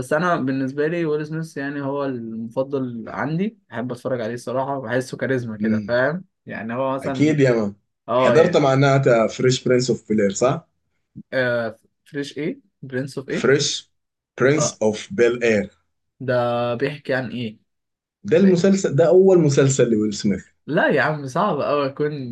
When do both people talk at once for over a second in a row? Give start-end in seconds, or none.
none